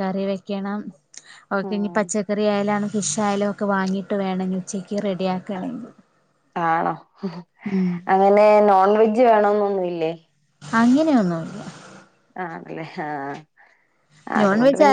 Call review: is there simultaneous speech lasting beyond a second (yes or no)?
no